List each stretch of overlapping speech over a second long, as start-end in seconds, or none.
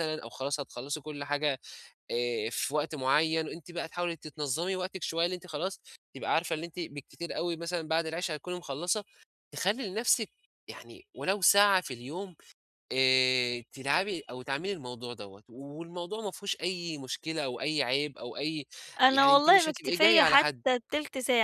19.1-20.6